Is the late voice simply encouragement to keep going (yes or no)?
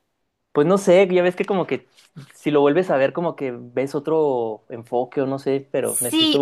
no